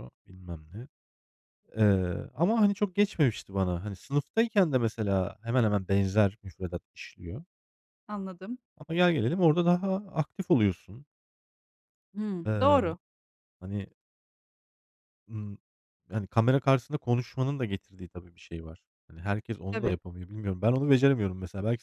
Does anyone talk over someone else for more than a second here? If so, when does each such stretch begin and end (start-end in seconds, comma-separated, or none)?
none